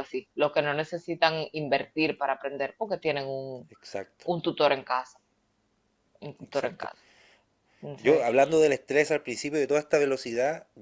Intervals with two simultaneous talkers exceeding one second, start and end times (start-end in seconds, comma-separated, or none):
none